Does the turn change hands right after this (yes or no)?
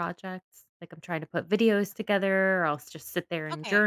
no